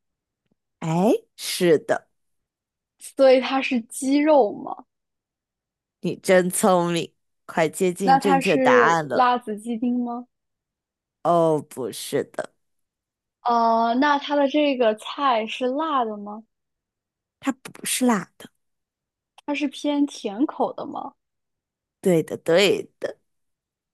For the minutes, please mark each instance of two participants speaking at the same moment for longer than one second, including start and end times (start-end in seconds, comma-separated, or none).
8.0-9.3